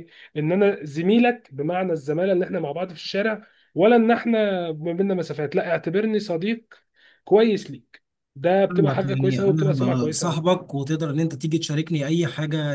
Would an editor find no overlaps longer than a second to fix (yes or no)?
no